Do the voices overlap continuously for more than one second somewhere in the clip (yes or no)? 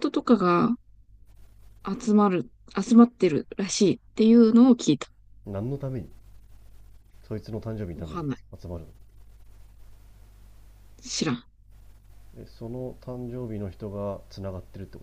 no